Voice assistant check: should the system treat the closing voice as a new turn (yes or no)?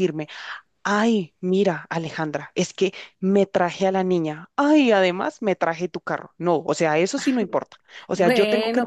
yes